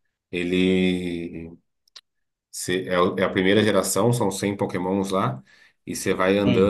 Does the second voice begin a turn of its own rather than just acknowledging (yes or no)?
no